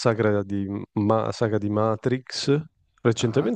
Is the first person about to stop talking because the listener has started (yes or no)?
no